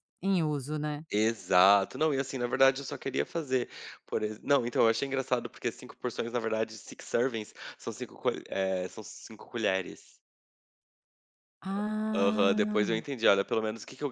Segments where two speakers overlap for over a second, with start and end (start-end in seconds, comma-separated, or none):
11.8-13.1